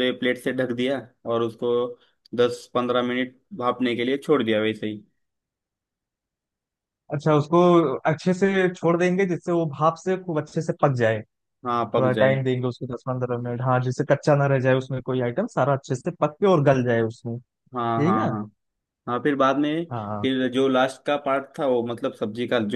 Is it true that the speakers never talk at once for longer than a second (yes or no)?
yes